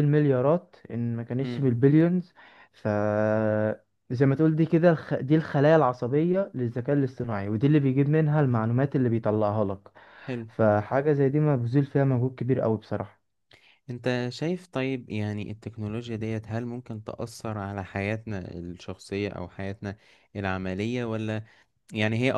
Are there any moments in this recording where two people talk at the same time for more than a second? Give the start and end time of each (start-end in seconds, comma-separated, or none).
none